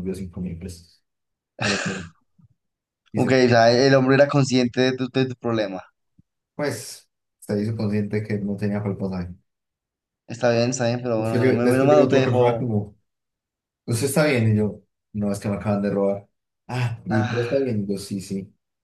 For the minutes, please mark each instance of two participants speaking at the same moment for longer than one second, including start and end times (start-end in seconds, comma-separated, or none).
11.1-12.7